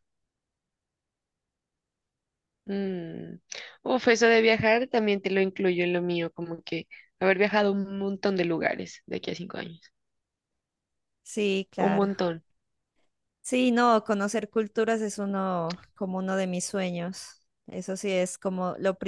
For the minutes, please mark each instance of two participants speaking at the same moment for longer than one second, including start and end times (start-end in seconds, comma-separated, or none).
none